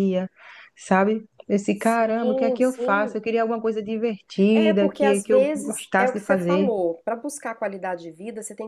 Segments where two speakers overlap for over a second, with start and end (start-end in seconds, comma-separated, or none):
1.7-3.2, 4.5-6.7